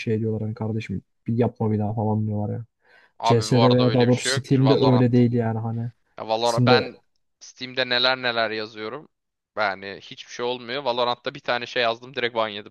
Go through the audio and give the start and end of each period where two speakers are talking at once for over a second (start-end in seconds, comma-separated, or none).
3.2-5.0